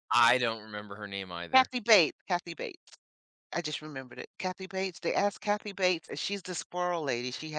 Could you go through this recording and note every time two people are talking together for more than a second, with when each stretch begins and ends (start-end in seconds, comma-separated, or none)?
none